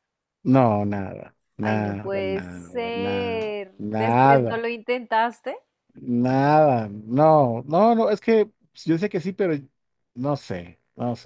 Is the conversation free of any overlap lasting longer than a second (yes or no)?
no